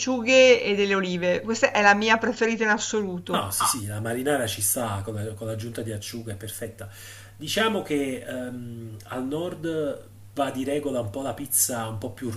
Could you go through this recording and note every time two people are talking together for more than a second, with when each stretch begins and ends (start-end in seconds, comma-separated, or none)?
none